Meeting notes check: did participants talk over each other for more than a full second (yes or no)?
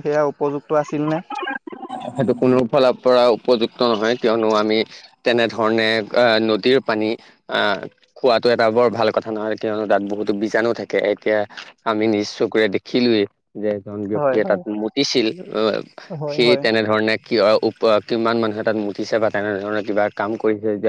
no